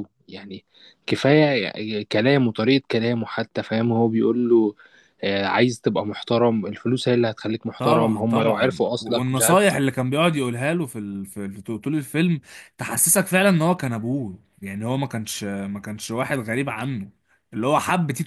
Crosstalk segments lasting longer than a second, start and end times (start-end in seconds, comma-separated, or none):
7.8-9.6